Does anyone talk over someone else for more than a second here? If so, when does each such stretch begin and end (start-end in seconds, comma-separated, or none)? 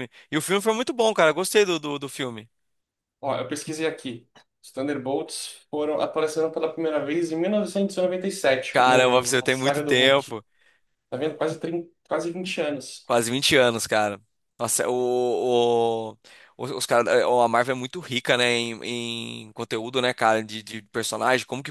8.7-10.4